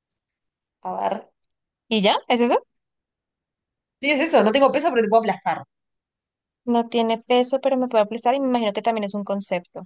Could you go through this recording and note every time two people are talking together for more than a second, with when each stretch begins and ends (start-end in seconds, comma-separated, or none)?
none